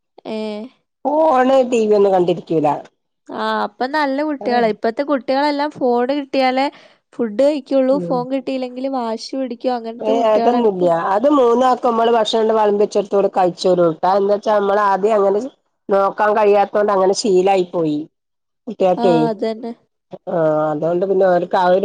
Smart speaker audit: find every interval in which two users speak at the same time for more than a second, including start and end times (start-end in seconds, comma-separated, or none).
none